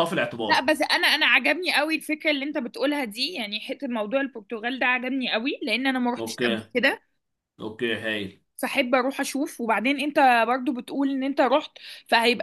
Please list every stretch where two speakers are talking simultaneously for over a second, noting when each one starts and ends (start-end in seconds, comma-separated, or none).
none